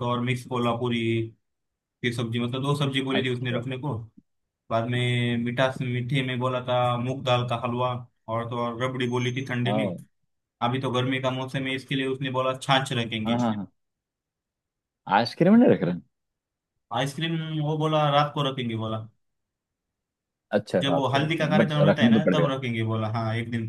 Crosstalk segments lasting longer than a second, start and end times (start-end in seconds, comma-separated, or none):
20.8-22.6